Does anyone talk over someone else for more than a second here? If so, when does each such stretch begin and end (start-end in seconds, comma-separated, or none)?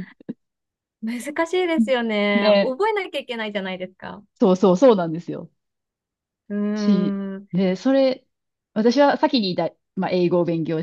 none